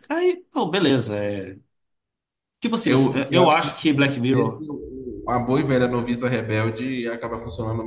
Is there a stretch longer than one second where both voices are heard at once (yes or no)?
yes